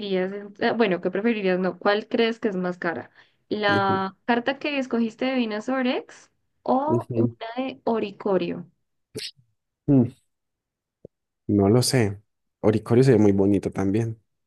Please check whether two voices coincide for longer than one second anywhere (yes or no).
no